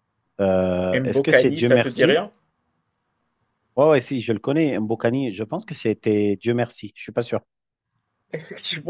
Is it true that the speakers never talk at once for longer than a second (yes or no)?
no